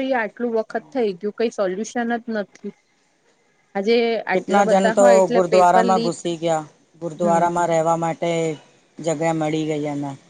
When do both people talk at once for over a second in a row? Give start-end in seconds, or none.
4.3-6.1